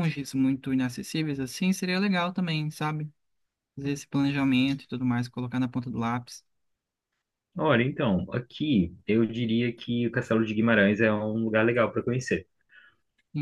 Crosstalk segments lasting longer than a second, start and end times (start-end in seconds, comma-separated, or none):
none